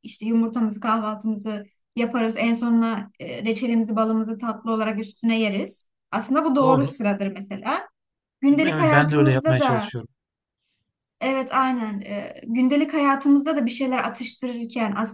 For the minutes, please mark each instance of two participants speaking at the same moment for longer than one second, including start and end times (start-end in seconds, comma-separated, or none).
8.6-9.9